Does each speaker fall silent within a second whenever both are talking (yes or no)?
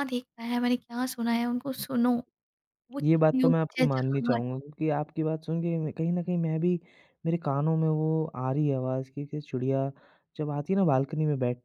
no